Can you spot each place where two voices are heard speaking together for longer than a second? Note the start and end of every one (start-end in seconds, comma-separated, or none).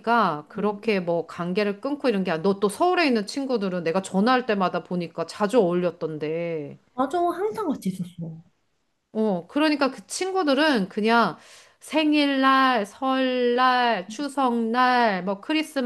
none